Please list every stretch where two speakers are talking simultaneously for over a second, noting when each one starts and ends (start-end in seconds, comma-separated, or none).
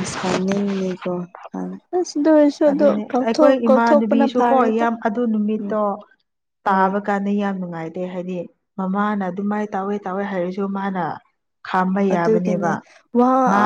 2.7-4.8